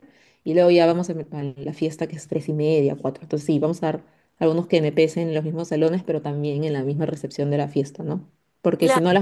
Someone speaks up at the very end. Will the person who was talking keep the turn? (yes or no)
yes